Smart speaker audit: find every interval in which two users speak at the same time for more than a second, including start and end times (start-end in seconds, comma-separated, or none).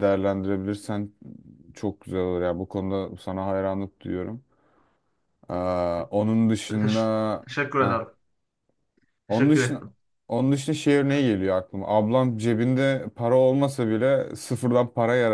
none